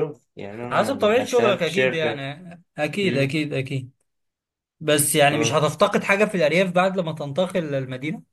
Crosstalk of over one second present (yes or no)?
yes